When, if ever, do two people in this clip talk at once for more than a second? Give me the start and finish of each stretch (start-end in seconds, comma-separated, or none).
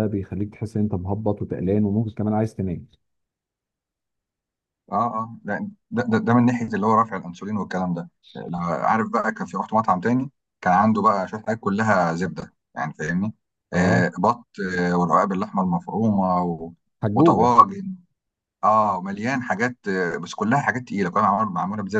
none